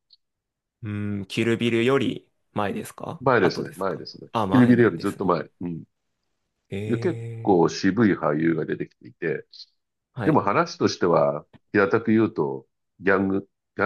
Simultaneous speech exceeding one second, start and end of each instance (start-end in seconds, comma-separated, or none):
3.2-5.2